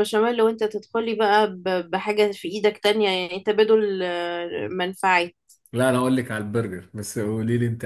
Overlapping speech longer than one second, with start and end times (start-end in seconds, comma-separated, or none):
none